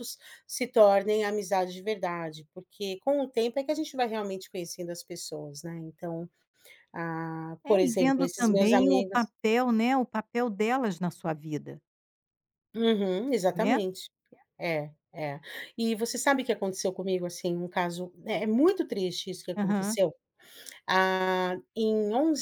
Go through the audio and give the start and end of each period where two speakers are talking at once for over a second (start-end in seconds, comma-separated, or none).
7.7-9.3